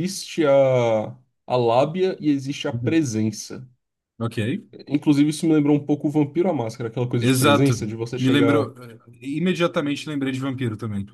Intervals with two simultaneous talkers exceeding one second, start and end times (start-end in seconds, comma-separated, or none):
7.2-8.7